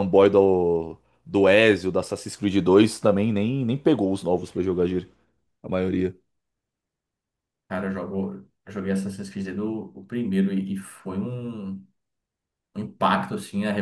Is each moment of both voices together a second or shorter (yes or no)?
yes